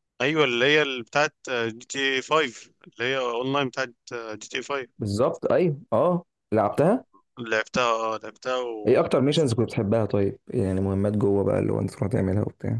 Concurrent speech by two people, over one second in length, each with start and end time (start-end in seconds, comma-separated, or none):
none